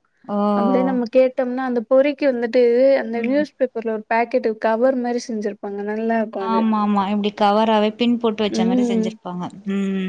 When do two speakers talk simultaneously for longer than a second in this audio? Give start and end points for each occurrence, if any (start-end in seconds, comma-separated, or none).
none